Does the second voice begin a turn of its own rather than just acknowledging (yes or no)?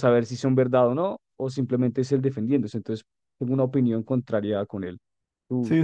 yes